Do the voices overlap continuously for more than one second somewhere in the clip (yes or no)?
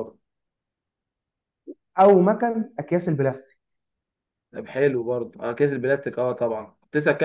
no